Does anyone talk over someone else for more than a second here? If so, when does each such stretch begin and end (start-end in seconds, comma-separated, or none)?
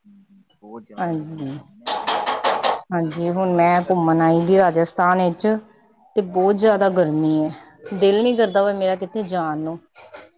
3.0-4.6